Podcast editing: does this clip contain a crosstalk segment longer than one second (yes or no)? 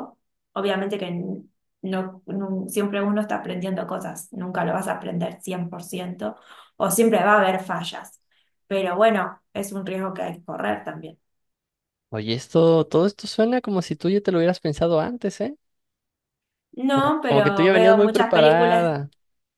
yes